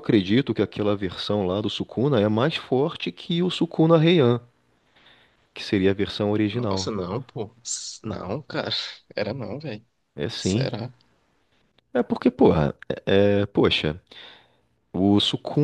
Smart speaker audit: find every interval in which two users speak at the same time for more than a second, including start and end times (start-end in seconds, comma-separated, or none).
none